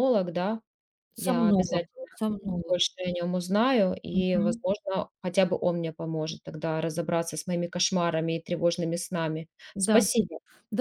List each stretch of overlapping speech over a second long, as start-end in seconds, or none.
none